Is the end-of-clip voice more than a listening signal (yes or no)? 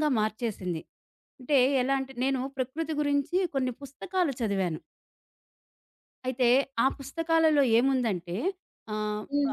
yes